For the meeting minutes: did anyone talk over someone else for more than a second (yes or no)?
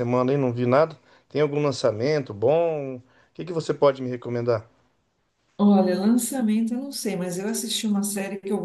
no